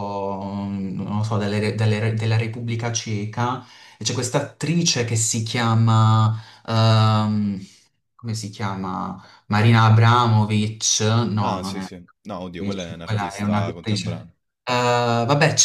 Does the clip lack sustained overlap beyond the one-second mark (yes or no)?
no